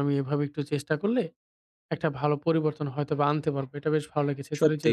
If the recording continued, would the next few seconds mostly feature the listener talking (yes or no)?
no